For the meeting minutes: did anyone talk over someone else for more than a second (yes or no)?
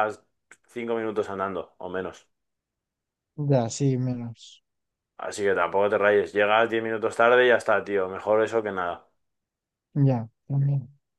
no